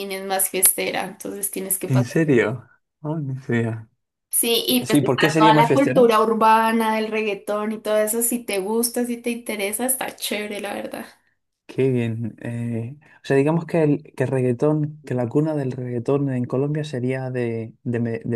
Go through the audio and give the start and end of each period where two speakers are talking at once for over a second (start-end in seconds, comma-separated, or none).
4.8-6.0